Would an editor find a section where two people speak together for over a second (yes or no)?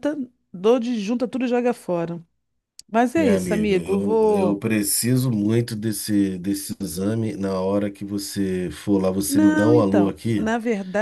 yes